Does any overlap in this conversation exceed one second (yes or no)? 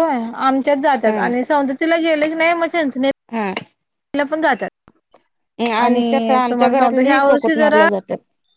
yes